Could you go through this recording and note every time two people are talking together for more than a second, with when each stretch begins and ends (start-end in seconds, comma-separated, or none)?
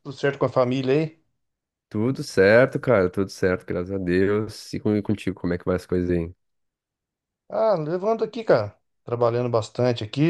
none